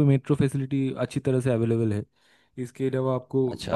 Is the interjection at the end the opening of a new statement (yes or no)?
no